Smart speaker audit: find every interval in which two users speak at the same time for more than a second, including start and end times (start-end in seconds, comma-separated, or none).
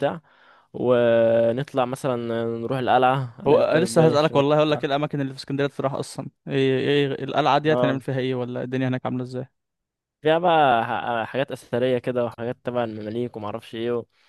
3.5-5.0